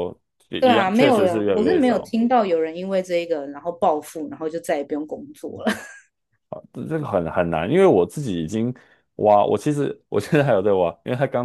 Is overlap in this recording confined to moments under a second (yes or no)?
no